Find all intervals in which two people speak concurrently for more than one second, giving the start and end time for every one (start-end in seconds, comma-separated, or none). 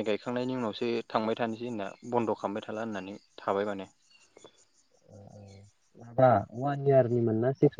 none